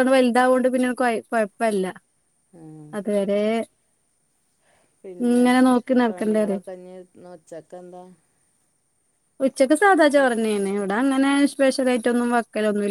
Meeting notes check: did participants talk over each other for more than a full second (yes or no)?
no